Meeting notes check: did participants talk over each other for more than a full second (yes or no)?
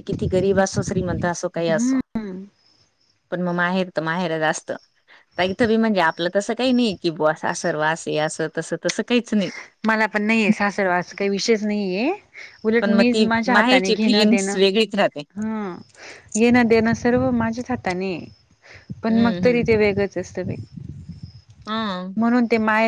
yes